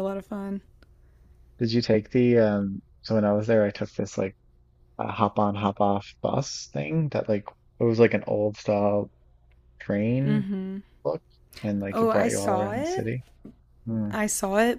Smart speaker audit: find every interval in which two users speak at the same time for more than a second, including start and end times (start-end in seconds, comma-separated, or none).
11.9-13.1